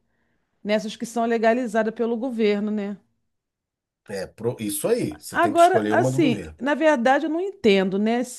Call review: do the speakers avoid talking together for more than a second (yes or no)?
no